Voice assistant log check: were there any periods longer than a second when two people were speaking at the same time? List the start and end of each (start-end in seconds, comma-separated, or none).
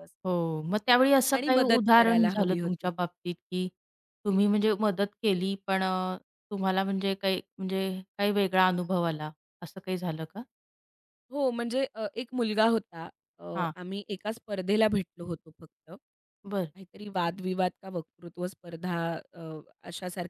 1.3-2.9